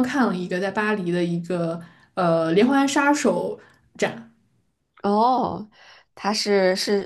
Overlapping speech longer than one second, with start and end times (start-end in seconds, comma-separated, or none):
none